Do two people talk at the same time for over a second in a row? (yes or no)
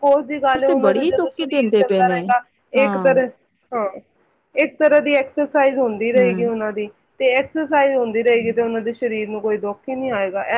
yes